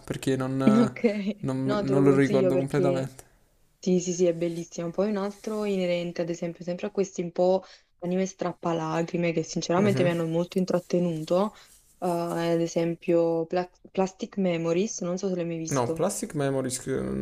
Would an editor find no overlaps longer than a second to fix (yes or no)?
no